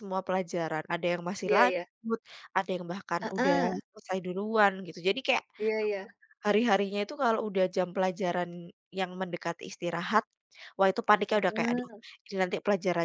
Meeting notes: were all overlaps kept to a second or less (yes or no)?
yes